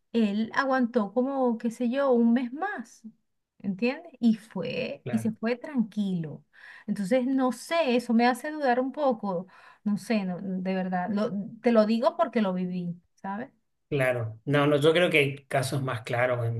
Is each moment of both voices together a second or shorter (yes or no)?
yes